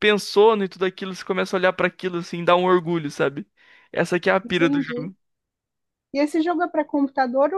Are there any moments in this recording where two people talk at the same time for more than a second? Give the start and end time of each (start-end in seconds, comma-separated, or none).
none